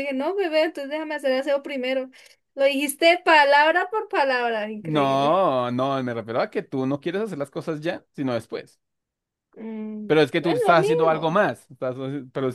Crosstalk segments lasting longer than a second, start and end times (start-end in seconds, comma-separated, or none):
10.1-11.4